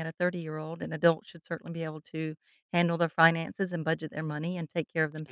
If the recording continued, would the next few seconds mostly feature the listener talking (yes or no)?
no